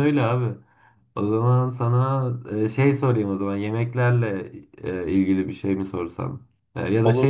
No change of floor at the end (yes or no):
yes